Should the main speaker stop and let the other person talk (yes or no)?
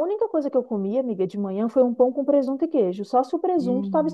yes